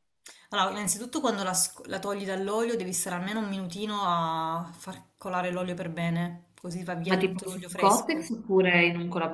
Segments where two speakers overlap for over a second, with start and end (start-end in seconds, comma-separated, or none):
7.0-8.3